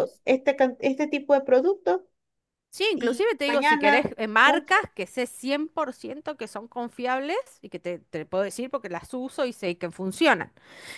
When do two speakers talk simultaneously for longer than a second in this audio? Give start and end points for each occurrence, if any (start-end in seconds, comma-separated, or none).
2.9-4.7